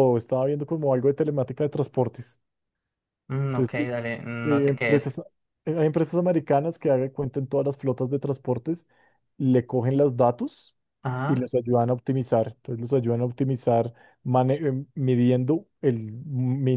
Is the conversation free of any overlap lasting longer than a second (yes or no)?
yes